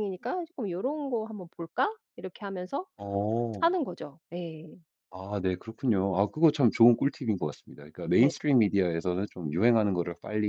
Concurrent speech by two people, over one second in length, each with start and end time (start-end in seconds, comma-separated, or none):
none